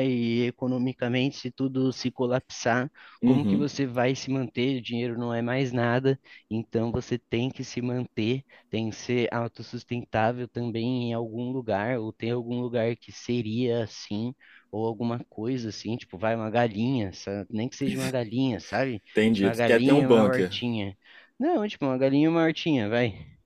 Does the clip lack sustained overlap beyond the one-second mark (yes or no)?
no